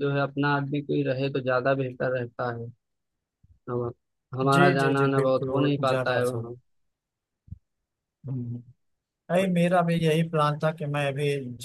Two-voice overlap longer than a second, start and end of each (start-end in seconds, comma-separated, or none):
4.5-6.5